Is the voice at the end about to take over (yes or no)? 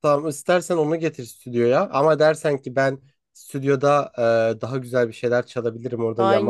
yes